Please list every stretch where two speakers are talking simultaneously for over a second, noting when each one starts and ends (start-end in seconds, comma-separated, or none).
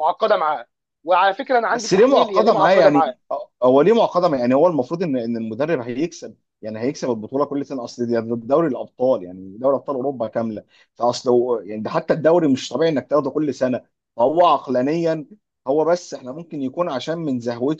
1.7-3.2